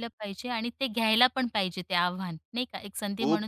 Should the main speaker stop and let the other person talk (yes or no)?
no